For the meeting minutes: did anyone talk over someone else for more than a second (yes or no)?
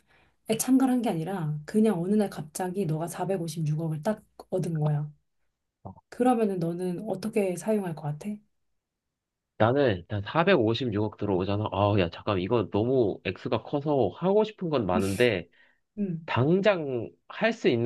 no